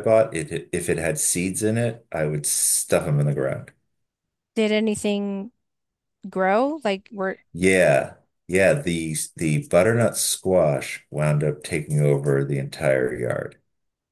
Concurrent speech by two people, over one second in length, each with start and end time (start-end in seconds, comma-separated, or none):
none